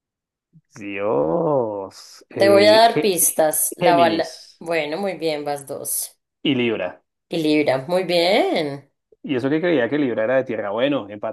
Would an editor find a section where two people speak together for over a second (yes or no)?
yes